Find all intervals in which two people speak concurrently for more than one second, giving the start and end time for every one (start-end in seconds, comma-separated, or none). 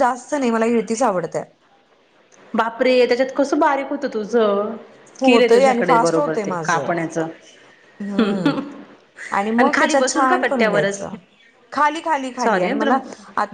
9.7-11.1